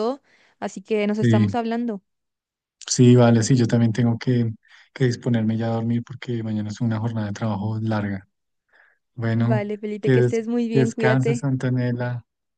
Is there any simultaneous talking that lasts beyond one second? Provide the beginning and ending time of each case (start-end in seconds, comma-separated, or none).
9.3-11.5